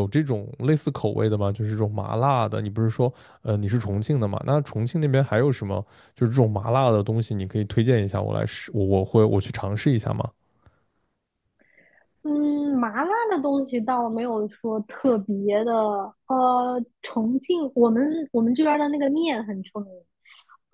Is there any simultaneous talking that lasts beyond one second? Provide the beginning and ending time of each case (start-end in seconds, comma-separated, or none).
none